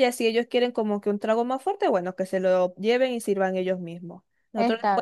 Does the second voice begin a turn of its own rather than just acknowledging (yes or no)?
no